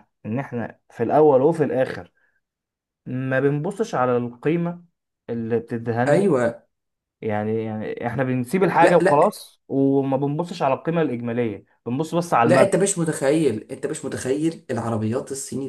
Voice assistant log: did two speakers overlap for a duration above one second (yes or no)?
no